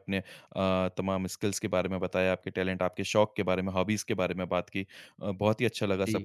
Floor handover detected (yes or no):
no